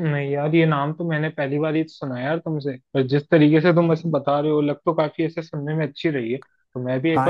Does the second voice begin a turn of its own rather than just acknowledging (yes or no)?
yes